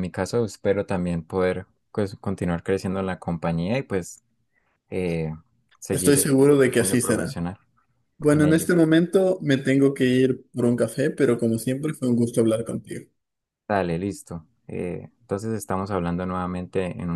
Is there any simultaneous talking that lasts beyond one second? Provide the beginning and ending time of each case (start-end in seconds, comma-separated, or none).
5.9-7.4